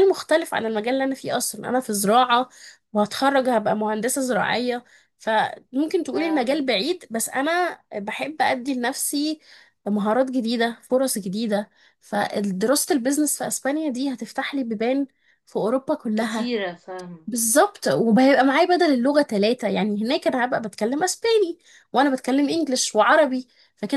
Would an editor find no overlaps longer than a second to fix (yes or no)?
yes